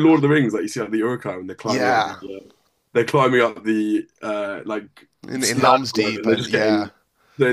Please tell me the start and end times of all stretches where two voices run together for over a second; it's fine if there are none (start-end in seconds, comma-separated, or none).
5.3-6.9